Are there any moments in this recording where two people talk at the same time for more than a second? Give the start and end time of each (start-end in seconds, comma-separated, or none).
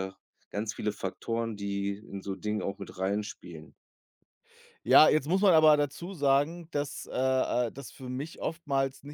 none